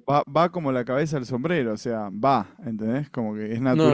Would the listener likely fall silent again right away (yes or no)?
no